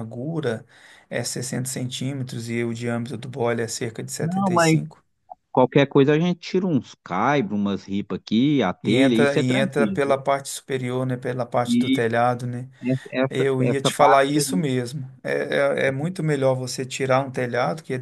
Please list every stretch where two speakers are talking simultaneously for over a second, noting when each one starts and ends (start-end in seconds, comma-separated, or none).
8.8-10.2, 13.3-14.7